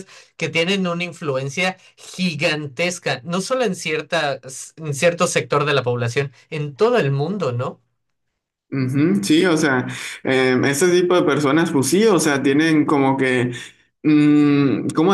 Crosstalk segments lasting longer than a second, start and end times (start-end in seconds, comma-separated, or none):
none